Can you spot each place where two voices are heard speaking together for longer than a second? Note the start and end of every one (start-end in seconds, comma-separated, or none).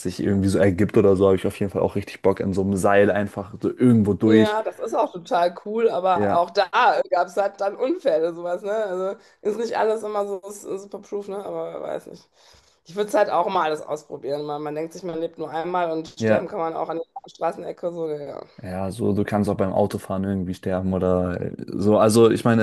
none